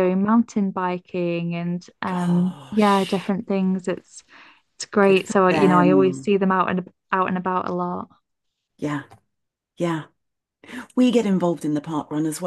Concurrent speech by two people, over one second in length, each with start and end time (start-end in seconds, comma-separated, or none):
2.0-3.3, 5.0-6.3